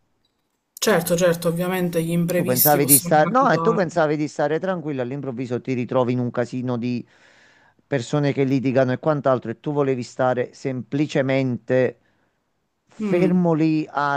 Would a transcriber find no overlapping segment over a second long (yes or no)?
no